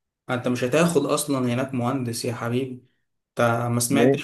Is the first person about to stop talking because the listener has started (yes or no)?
no